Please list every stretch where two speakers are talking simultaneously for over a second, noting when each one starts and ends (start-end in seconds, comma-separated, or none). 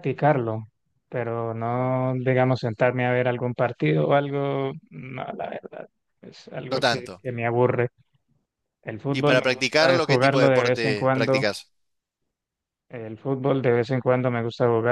9.1-11.5